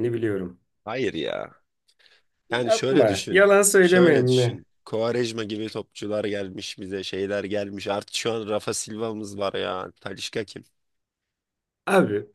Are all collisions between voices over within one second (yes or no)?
no